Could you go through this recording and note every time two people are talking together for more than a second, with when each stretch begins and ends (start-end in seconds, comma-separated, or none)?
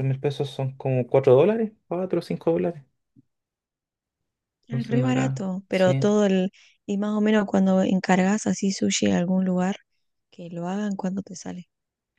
4.7-6.1